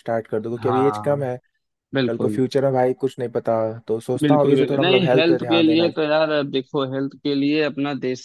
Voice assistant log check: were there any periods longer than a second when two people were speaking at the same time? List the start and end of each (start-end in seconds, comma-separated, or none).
4.2-5.9